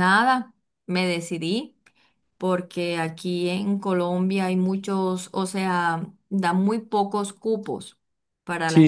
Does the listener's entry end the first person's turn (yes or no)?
yes